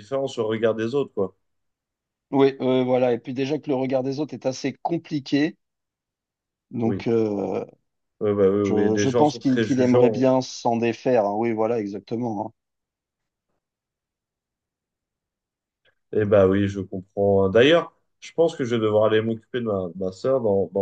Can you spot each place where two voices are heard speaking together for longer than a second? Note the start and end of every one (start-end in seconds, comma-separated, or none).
8.6-10.3